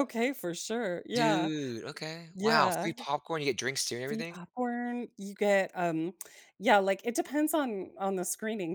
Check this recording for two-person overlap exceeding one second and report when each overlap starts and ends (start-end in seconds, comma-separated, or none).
none